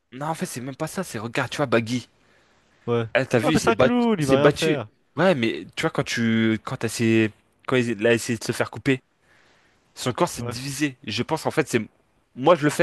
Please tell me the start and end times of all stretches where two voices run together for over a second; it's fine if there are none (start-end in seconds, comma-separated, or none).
3.4-4.9